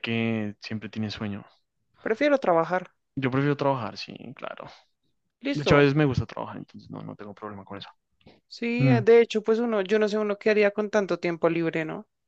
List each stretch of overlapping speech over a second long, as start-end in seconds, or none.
none